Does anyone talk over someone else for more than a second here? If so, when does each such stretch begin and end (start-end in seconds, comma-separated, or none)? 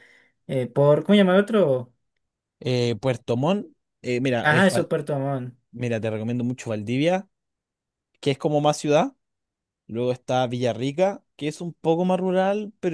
none